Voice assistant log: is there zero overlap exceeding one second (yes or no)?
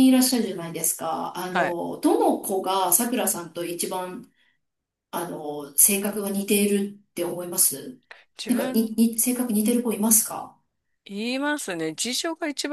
yes